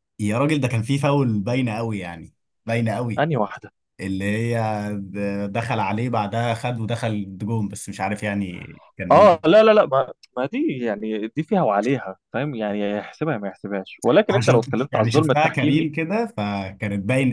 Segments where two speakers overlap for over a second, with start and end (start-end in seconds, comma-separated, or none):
14.3-15.9